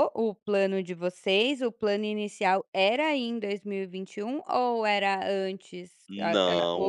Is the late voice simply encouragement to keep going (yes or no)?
no